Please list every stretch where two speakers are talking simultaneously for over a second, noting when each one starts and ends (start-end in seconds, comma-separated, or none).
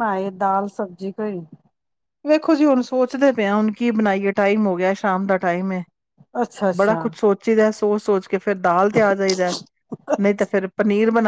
none